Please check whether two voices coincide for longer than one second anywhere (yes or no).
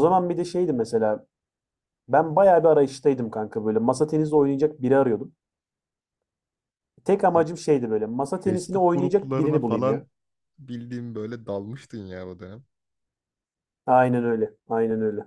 yes